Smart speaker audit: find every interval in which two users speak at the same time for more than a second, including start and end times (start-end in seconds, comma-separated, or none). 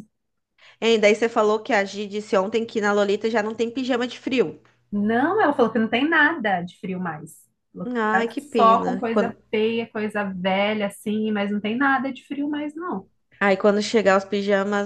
8.1-9.4